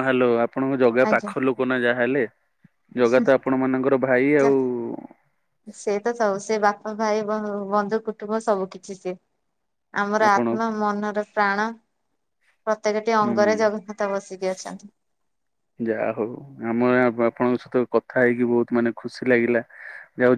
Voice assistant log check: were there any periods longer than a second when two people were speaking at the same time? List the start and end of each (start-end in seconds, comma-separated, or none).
none